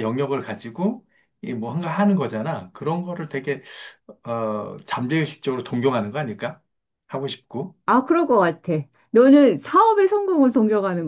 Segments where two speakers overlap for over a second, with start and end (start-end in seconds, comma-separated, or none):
none